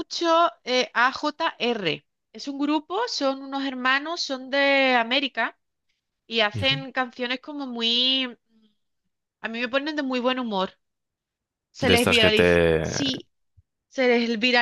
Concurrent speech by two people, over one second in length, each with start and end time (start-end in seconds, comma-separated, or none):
11.8-13.2